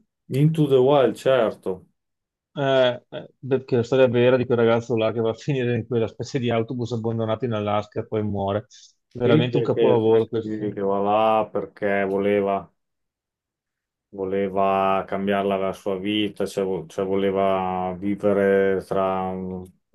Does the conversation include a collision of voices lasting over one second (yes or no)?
yes